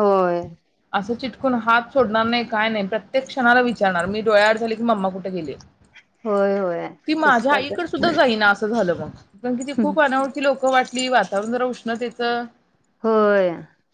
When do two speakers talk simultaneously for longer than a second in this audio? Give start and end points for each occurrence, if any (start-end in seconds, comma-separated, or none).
none